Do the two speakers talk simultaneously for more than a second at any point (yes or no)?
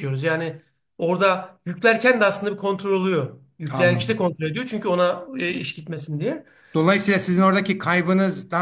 no